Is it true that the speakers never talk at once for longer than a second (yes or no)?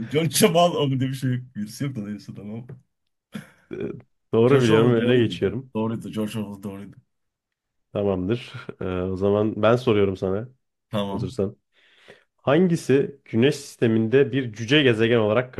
no